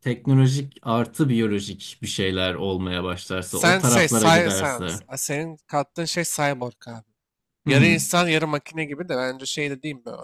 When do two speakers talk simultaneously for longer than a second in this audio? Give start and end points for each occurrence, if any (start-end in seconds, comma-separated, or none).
3.5-5.0